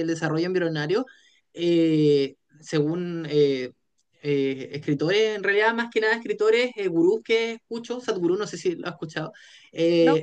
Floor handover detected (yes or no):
no